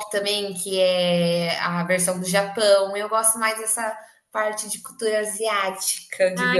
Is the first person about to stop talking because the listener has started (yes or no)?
yes